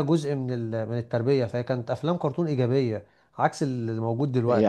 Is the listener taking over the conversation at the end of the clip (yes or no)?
yes